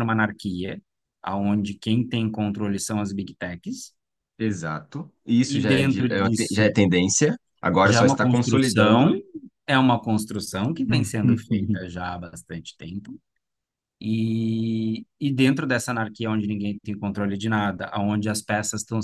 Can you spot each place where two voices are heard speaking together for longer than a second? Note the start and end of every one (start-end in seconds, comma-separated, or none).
5.5-6.7, 7.8-9.1